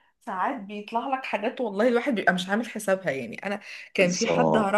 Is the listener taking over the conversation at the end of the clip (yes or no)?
no